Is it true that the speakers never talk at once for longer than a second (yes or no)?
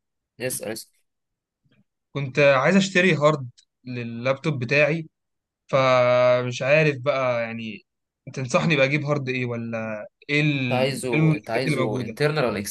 no